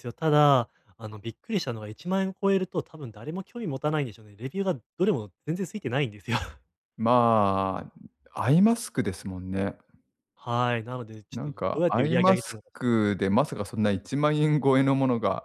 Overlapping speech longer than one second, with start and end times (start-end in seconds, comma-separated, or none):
11.3-13.2